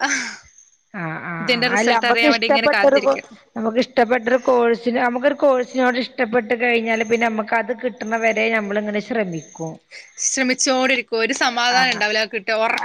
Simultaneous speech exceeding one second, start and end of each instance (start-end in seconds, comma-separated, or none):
1.4-3.1